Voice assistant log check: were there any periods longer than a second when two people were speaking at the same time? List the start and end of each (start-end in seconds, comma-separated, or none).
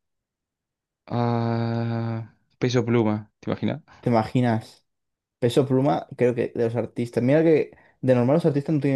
none